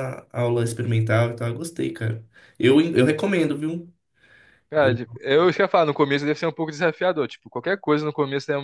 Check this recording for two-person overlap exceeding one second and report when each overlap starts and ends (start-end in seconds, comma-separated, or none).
none